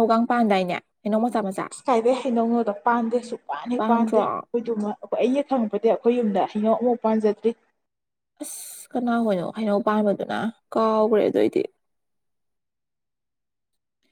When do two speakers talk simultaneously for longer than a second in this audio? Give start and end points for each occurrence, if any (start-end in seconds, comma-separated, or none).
none